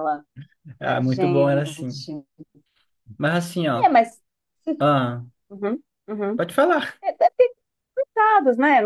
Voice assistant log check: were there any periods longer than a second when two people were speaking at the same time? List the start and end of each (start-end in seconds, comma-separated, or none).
0.8-2.0